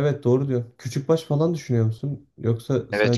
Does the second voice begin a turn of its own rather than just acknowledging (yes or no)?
yes